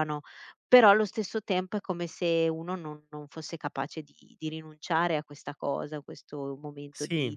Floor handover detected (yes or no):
no